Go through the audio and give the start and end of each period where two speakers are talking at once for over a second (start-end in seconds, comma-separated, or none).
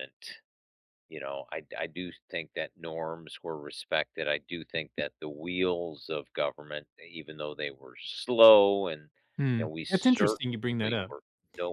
9.6-11.1